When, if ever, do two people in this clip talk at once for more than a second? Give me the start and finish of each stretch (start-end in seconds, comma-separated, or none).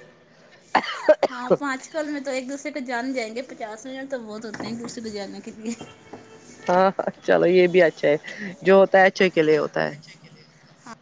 none